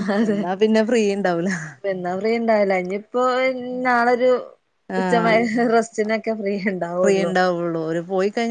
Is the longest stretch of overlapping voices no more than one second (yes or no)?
yes